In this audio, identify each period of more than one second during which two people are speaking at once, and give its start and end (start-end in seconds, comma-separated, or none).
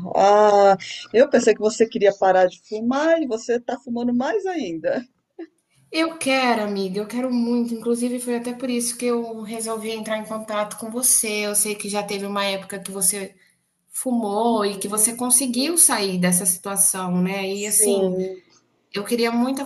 none